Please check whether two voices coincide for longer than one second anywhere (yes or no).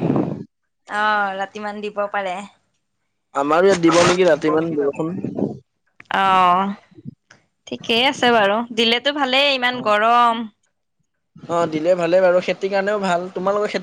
no